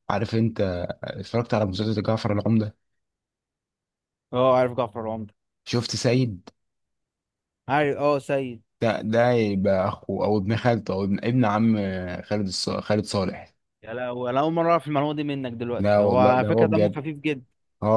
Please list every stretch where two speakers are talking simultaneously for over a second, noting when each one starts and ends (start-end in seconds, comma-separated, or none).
15.8-17.0